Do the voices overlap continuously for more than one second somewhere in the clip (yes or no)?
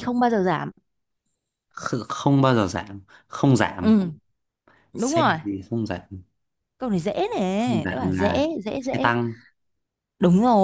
yes